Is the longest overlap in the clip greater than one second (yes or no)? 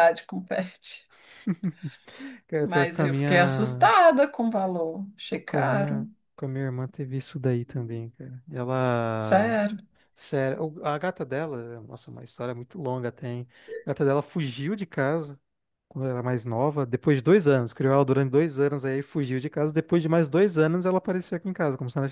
yes